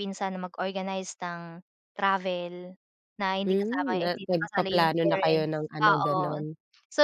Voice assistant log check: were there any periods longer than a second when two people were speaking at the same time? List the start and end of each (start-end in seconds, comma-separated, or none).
3.5-6.4